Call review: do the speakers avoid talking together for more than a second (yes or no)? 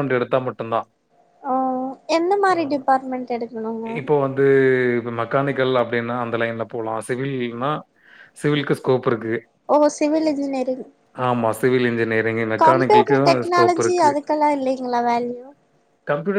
no